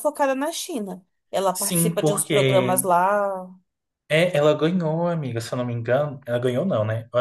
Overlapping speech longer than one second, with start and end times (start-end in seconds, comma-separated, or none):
1.5-2.9